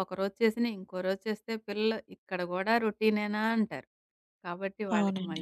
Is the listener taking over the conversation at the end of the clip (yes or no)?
no